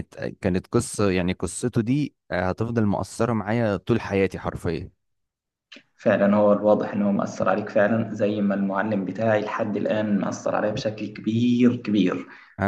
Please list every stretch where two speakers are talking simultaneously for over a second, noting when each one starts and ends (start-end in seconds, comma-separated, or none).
none